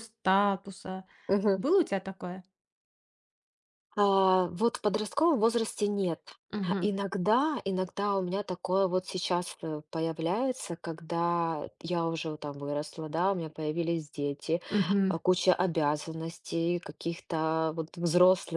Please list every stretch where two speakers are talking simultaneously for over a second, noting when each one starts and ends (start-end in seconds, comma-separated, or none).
none